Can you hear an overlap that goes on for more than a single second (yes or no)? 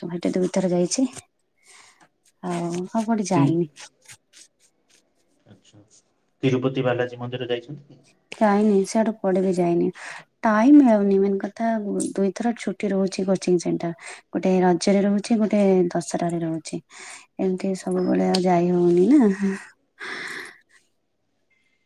no